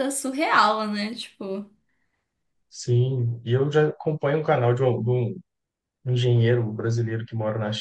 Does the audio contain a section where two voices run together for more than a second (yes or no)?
no